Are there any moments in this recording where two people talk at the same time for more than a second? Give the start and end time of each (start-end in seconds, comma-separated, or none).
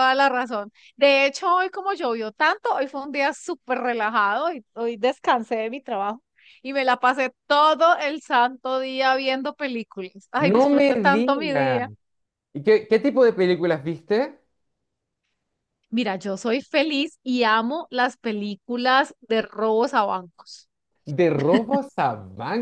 10.4-11.8